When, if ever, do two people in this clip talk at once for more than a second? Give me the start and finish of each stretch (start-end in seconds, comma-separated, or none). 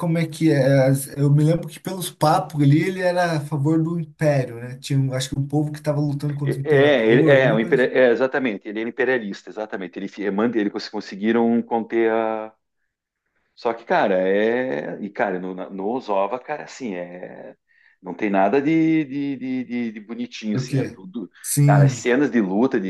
6.4-7.9